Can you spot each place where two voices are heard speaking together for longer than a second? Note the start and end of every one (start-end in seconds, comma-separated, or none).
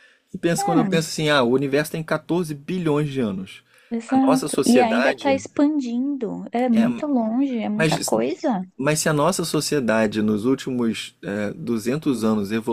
4.1-5.4